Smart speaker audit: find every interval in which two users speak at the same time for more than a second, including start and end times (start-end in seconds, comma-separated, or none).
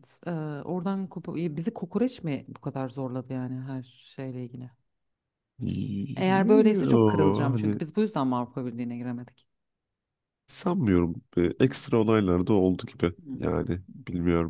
6.2-7.8